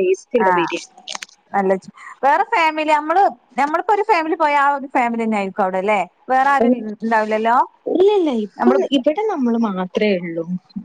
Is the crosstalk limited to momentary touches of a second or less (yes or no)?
yes